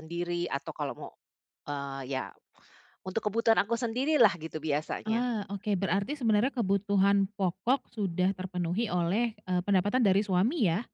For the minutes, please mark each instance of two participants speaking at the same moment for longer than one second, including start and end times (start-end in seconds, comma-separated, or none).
none